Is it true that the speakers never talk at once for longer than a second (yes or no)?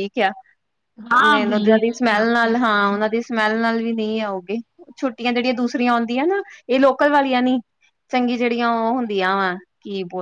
no